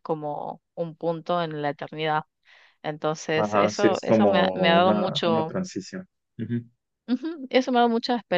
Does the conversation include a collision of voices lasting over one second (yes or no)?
yes